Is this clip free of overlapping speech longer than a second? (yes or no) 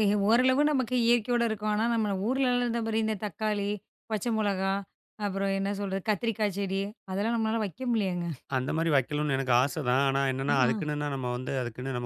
yes